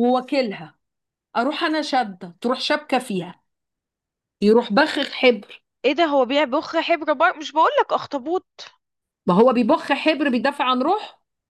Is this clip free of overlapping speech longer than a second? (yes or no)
yes